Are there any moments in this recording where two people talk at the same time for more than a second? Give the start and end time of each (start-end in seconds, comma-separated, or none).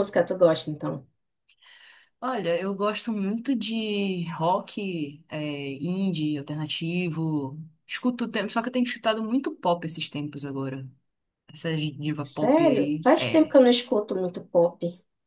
12.2-13.6